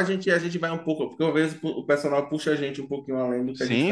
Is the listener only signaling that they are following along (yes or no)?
no